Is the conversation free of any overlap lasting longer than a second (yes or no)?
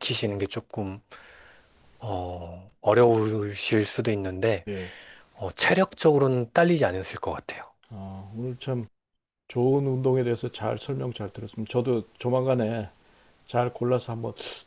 yes